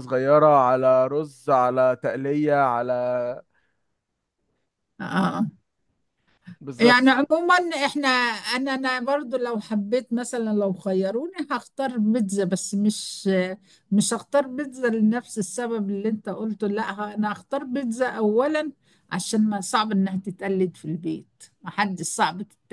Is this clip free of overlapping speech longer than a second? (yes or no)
yes